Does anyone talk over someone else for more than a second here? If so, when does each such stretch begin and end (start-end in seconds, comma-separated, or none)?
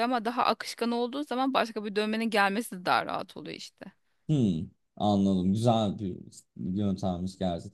none